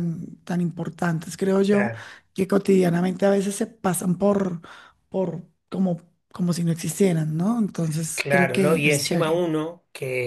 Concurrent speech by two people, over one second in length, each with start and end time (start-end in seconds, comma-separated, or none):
8.2-9.4